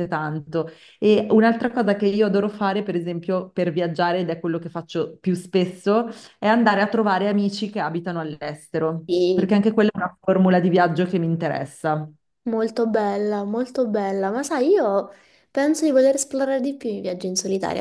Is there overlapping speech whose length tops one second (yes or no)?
no